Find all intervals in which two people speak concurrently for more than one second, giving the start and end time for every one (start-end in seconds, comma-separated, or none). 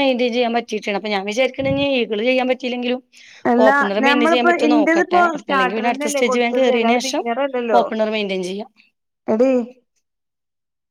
3.7-7.0